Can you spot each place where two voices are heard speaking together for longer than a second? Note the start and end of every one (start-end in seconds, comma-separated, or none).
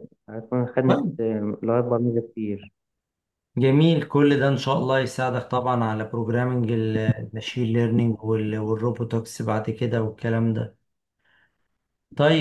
none